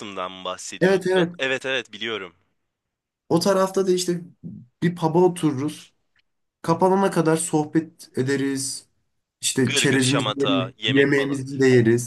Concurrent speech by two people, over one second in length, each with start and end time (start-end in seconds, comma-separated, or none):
9.7-11.4